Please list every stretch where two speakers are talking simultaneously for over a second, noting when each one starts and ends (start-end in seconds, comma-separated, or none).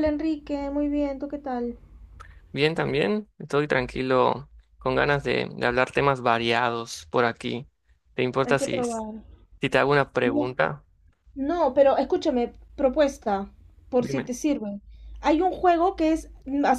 none